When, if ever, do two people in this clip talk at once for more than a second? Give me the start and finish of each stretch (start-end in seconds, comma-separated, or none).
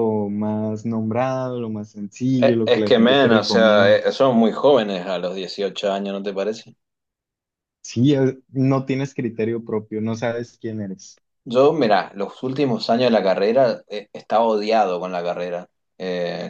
2.4-4.0